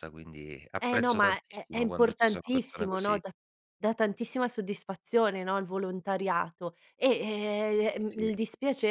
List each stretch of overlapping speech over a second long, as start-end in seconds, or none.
0.8-3.2